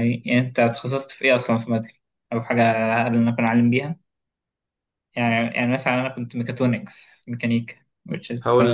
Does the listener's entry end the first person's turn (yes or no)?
yes